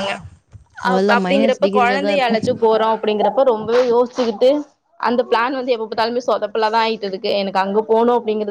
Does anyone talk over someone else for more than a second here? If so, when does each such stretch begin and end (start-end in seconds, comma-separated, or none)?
0.9-2.4